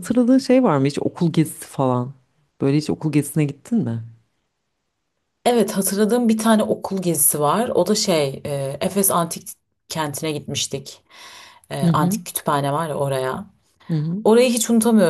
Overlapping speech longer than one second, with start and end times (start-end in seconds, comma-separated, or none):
none